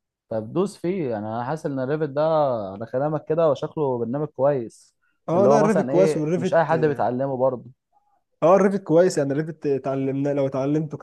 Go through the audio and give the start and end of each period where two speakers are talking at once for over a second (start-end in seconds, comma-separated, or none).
5.3-6.7